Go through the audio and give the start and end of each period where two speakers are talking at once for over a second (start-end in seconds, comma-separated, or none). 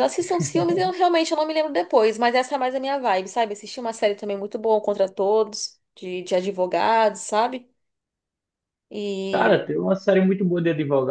none